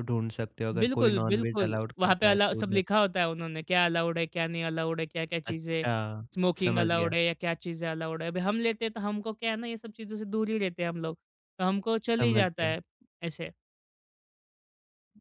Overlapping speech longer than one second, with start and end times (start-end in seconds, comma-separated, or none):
0.8-2.8